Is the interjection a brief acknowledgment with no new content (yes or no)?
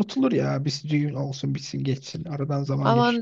no